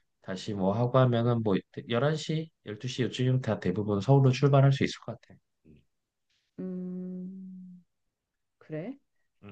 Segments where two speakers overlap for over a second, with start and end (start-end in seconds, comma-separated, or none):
none